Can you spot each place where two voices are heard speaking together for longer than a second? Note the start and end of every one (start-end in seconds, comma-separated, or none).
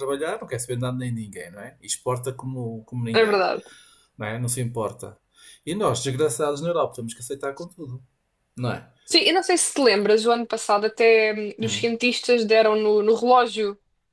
none